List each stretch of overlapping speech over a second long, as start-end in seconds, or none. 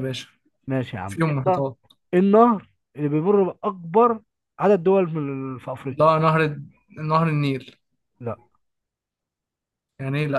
none